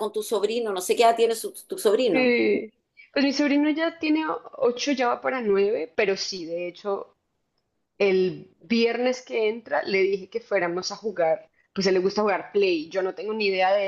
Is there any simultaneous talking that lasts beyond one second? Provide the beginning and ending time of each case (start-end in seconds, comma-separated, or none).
none